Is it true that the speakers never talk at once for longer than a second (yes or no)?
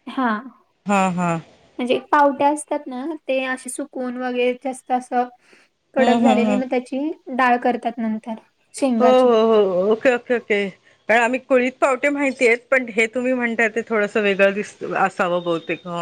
yes